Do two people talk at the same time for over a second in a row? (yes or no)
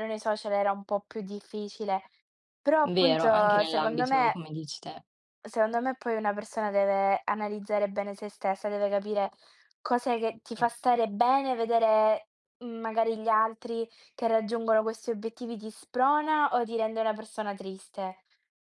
yes